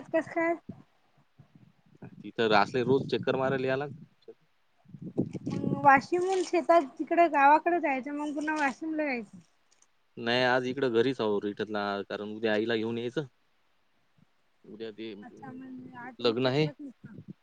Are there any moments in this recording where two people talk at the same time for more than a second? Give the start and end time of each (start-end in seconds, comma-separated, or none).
15.2-16.6